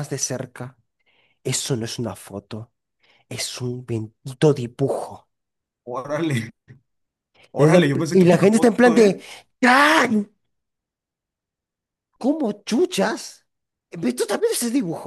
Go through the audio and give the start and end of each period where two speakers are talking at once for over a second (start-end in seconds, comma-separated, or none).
7.6-9.2